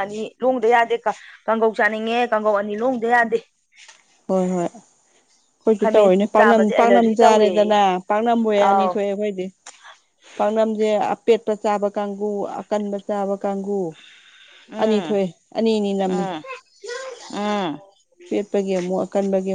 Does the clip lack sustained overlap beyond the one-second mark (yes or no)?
no